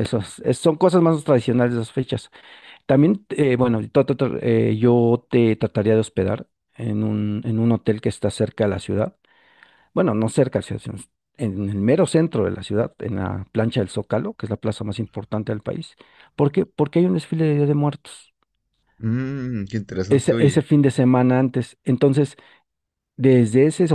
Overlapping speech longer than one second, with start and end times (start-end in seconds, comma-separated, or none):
none